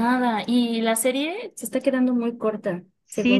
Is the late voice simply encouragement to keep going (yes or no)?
no